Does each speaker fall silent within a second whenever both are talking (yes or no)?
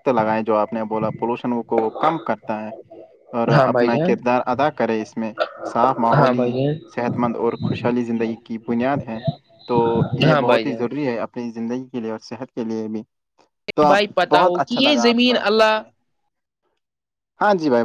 no